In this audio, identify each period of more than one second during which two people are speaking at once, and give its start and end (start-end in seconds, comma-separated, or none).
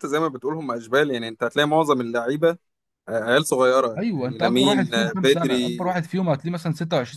4.0-5.8